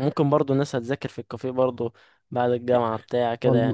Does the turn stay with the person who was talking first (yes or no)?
no